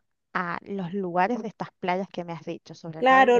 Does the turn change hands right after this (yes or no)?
yes